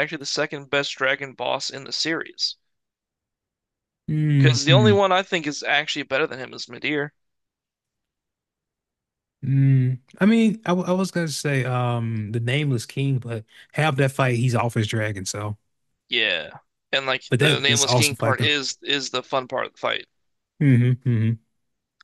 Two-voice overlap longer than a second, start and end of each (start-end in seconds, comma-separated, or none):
17.3-18.5